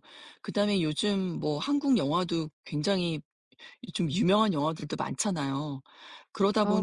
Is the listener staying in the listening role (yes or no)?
yes